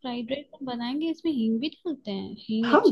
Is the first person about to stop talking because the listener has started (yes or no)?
yes